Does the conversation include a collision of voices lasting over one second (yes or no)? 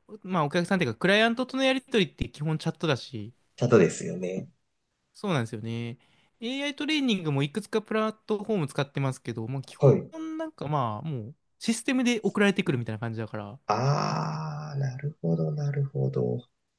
no